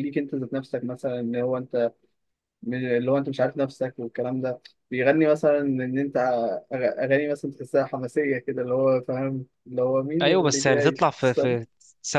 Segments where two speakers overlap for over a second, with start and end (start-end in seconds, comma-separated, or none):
10.2-11.6